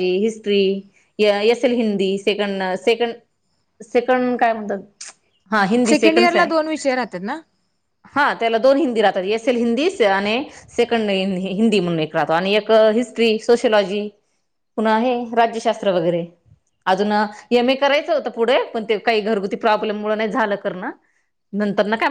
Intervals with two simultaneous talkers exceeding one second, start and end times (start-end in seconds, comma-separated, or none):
none